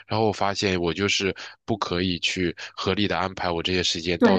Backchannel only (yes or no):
no